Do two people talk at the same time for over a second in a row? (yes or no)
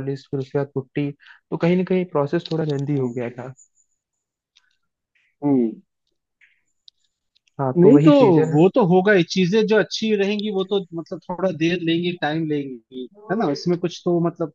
no